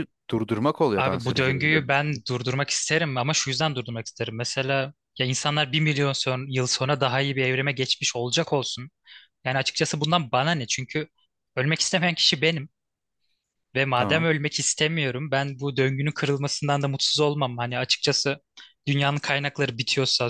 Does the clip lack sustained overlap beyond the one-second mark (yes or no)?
no